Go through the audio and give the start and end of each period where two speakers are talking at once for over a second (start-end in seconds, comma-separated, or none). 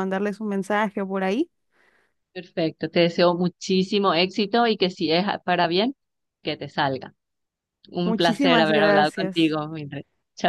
8.0-9.6